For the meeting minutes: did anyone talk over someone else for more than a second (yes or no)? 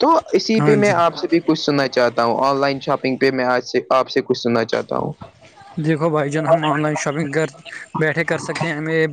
no